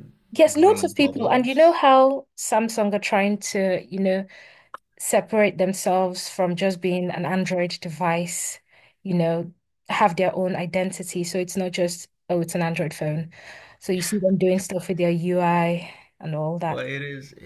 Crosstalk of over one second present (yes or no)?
yes